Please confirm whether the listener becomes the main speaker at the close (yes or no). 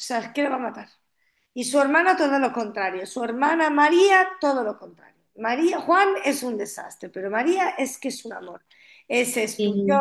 no